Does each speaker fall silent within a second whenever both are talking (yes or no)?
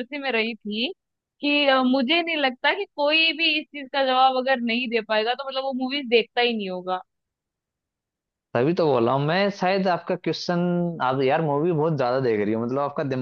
yes